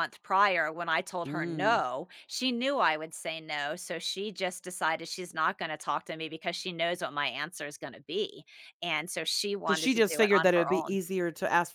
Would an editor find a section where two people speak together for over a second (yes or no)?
yes